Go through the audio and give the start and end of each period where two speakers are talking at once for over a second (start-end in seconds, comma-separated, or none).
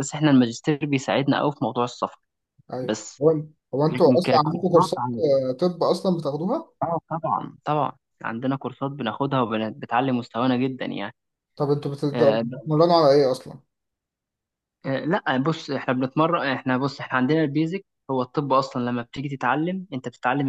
3.9-5.2